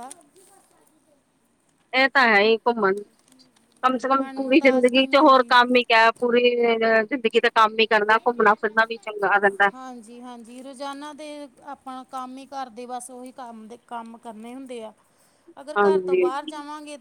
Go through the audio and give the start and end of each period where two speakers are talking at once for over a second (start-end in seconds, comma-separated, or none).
4.1-5.5